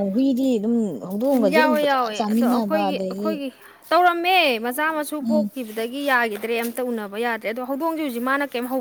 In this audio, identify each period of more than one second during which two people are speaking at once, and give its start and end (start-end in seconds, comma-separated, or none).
1.6-3.3